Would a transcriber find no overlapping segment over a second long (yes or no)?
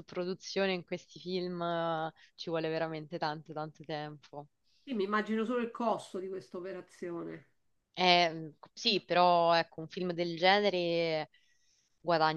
yes